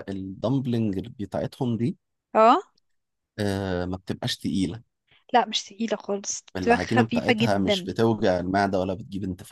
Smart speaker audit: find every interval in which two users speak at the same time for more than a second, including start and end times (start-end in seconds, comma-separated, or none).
6.6-7.9